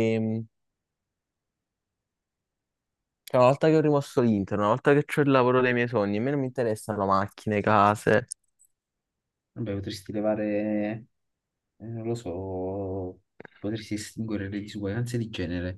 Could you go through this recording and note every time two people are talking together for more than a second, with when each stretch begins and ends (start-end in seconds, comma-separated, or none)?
none